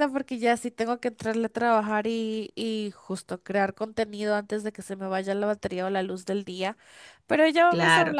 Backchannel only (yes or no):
yes